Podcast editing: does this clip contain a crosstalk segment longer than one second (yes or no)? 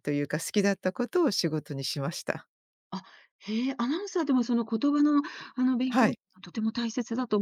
no